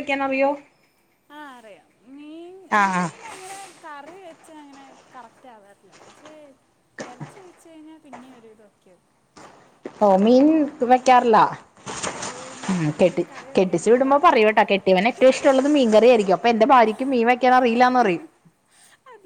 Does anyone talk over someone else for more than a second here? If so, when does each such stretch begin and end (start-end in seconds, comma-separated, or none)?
13.0-14.6